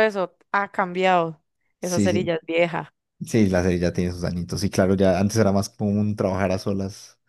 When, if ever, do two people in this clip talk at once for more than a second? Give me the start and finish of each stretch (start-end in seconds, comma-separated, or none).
none